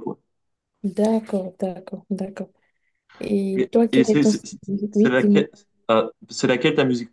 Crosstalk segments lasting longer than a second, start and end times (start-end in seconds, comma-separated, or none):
3.5-5.5